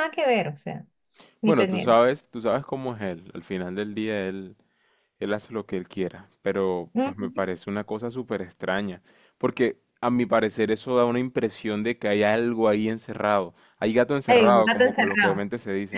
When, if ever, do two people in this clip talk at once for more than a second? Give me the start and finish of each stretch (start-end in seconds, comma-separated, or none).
14.3-15.5